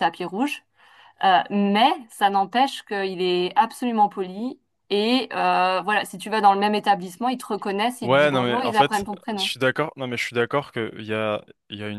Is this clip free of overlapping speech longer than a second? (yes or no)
no